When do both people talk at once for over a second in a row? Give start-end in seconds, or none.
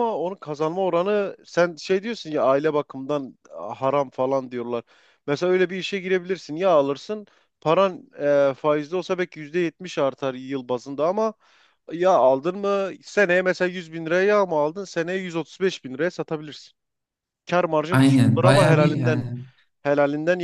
17.9-19.3